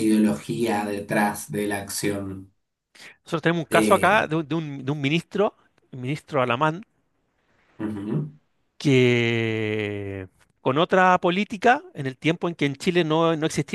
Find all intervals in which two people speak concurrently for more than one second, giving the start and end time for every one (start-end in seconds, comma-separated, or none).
none